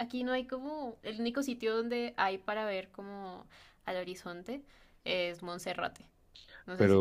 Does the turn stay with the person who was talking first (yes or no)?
no